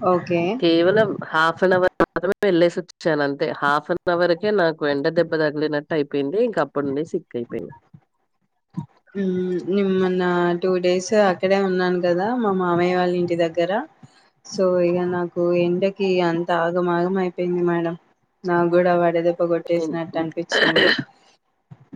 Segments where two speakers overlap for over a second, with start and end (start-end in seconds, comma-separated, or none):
none